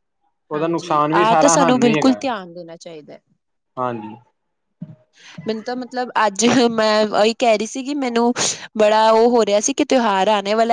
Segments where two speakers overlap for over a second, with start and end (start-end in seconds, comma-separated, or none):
0.5-2.2